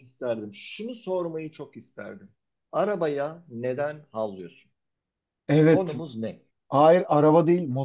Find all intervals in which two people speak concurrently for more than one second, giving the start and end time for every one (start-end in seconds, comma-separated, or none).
none